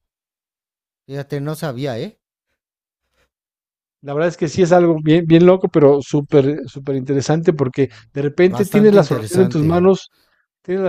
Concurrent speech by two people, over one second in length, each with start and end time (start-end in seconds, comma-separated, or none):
8.5-9.9